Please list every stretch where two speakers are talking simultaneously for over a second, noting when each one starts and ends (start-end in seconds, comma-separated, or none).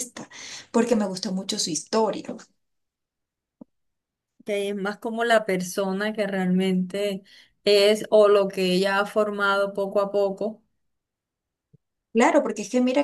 none